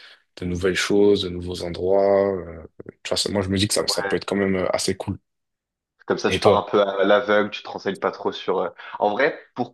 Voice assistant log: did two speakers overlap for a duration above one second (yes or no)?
no